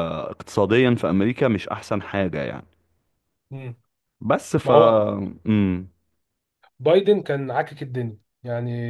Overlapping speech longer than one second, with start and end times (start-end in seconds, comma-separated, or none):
none